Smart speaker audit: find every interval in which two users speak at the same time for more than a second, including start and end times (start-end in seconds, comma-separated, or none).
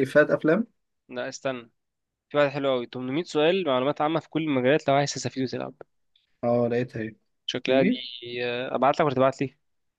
none